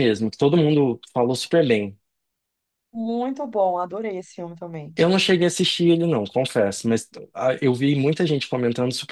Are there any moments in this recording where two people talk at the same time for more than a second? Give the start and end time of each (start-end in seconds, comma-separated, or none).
none